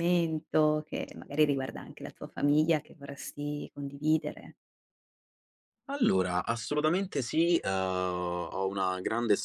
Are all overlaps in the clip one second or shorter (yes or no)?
yes